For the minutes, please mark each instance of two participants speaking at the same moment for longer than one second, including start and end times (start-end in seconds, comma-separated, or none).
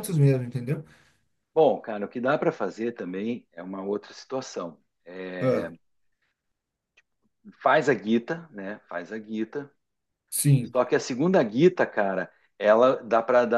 none